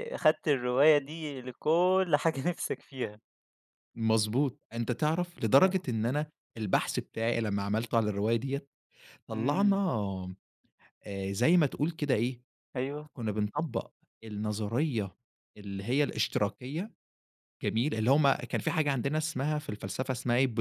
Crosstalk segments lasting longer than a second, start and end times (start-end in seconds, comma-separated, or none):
none